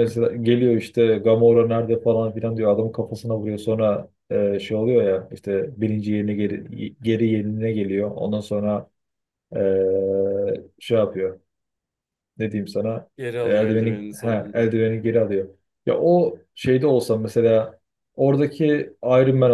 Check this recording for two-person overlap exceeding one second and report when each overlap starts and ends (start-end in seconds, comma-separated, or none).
13.2-14.7